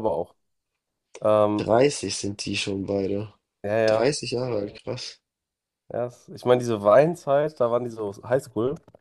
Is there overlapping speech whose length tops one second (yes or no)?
no